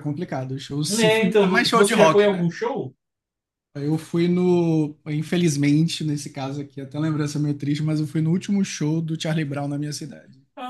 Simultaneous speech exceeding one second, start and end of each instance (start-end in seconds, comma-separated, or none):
0.9-2.5